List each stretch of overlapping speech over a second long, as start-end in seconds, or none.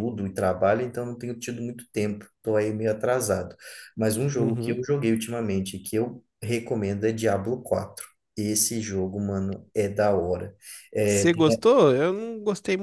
none